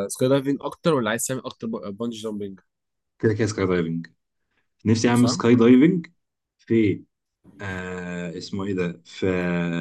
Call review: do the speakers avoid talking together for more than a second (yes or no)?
yes